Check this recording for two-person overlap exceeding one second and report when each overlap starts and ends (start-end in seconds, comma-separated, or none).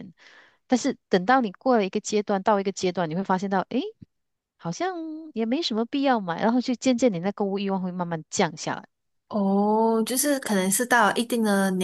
none